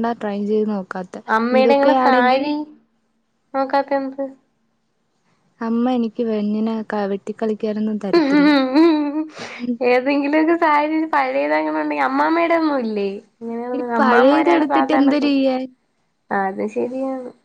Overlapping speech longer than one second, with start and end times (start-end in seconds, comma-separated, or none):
13.8-15.3